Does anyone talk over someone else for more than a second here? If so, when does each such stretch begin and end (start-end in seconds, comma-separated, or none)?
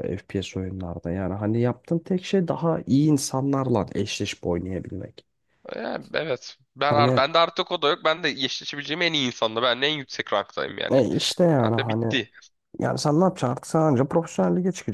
none